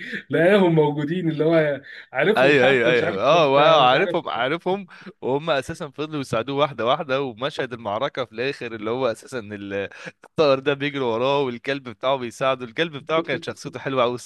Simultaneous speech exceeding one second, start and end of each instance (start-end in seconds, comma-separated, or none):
2.4-4.1